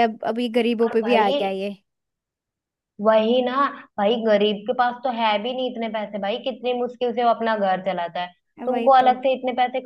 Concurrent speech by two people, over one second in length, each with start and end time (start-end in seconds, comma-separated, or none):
none